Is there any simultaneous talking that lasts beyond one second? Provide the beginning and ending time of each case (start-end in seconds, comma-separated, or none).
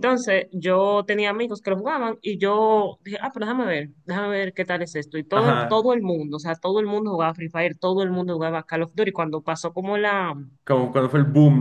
none